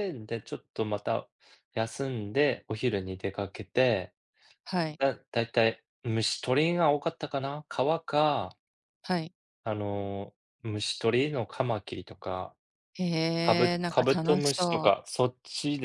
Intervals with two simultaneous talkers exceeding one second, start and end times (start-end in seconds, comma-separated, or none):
13.4-14.9